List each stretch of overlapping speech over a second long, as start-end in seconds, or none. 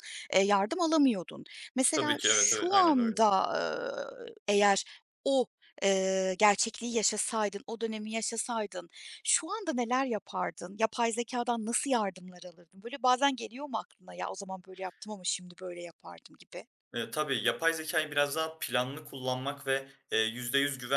1.9-3.2